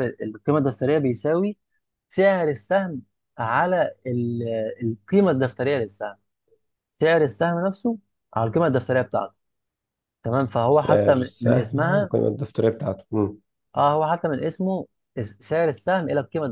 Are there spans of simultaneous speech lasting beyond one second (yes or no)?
yes